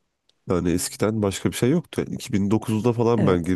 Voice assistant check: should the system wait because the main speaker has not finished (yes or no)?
no